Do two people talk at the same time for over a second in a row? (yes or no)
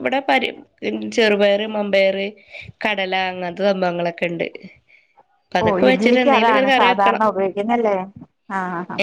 yes